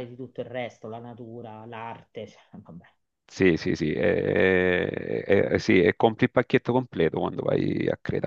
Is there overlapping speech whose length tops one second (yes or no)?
no